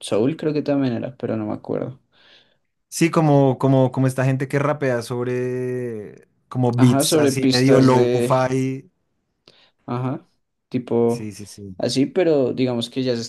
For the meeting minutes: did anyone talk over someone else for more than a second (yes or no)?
yes